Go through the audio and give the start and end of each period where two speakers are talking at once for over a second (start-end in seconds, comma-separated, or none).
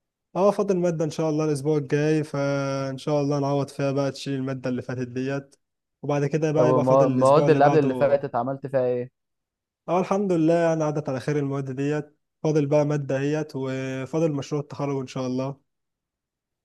6.5-8.2